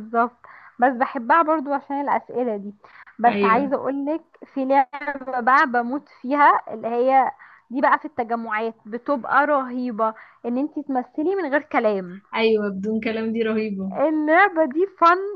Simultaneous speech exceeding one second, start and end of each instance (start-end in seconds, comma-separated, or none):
none